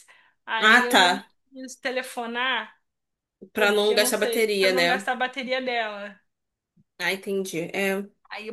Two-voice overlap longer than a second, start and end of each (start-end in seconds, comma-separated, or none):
3.5-5.0